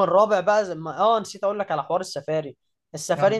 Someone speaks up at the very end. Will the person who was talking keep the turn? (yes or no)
yes